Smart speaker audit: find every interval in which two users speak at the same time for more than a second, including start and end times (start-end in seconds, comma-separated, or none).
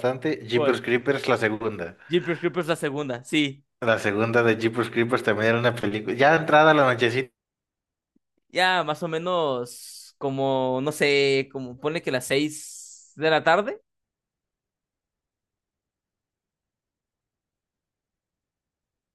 none